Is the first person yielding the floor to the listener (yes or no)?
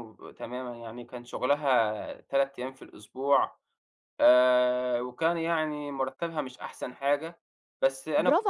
yes